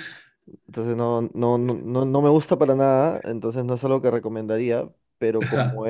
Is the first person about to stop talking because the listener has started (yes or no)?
no